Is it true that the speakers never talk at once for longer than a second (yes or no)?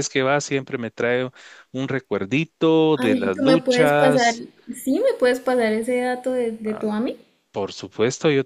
no